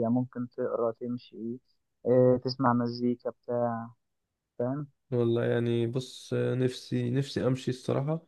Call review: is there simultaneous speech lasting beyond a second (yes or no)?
no